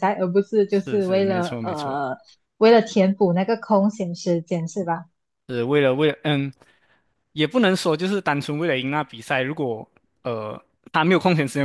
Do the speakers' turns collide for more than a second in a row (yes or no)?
yes